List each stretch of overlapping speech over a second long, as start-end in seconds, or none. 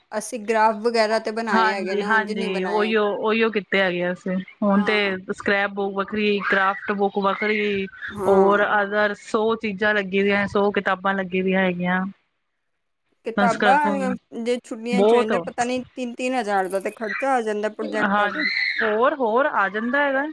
1.5-2.9